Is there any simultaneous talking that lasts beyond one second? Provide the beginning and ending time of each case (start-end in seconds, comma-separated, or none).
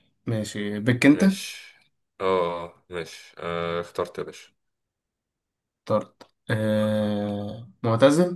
none